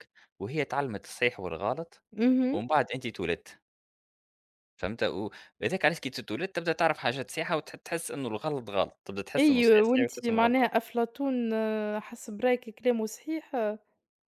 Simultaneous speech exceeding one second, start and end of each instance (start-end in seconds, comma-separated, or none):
9.4-10.7